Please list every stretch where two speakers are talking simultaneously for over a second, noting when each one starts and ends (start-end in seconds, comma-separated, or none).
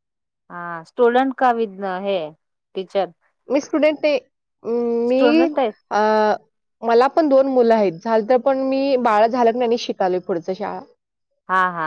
none